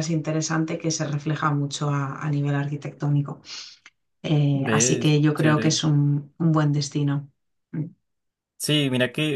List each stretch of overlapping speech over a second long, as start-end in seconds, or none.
4.5-5.8